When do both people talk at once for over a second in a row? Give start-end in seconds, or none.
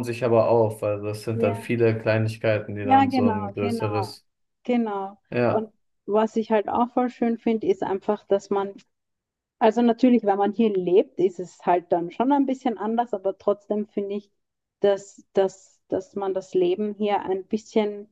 2.8-4.1